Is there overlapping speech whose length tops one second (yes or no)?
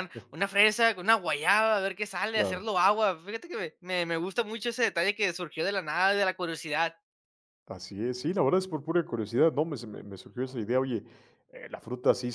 no